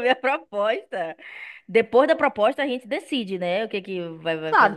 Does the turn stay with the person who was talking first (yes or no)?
no